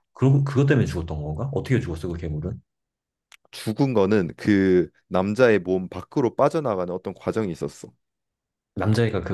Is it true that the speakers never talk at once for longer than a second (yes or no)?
yes